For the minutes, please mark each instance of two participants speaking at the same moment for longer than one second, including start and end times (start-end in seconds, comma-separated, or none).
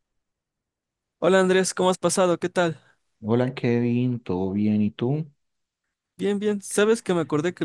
none